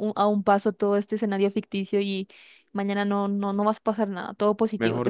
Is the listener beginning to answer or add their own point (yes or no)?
yes